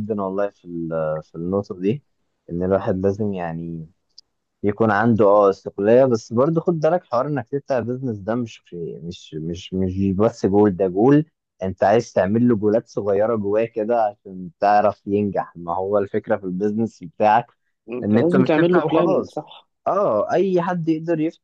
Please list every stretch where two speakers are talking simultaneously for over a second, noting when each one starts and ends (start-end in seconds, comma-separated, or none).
18.0-19.4